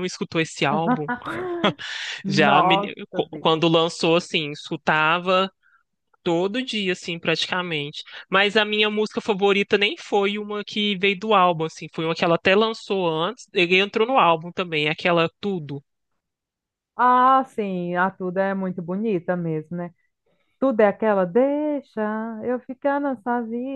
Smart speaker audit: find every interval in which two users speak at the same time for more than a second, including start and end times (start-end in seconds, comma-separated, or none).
2.3-3.6